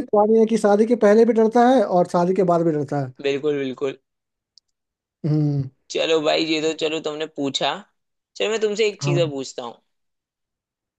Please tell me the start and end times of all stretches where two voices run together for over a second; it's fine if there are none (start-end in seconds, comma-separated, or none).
none